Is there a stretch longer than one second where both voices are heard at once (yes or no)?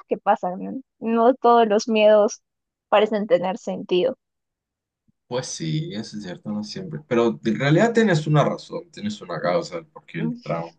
no